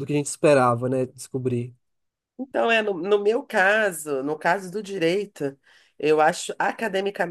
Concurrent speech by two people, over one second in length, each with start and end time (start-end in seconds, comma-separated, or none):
none